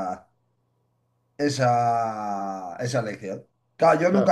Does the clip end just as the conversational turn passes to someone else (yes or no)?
no